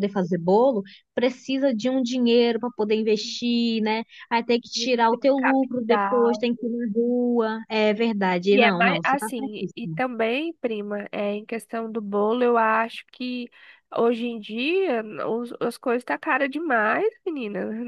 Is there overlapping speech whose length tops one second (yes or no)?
yes